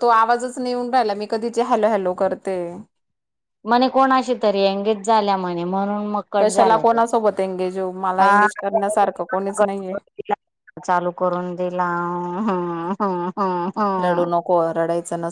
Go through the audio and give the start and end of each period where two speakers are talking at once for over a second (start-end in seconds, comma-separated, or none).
none